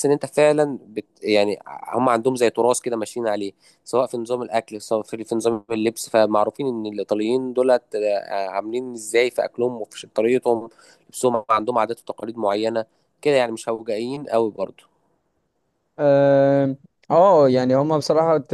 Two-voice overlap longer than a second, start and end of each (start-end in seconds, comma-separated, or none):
none